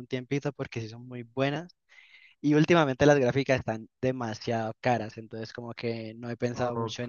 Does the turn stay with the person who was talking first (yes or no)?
no